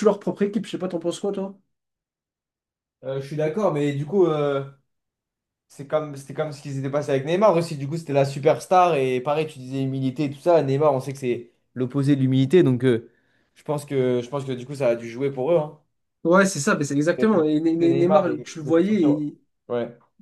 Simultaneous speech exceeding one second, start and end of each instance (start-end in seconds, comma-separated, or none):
17.2-19.2